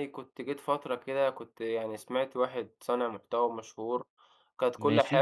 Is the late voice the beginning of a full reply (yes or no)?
no